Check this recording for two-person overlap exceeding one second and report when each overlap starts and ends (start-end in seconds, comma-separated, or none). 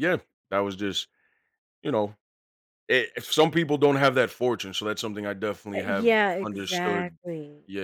5.8-7.2